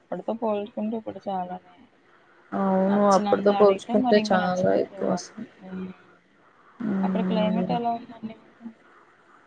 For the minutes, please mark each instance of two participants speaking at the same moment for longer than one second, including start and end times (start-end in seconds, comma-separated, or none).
2.9-5.3